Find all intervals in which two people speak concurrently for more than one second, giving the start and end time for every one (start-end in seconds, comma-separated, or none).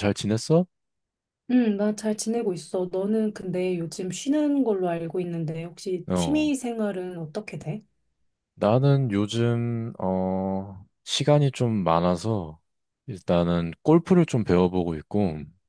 none